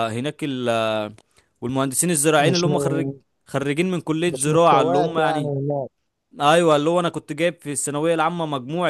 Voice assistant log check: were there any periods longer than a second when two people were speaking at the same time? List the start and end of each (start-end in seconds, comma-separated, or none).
4.3-5.5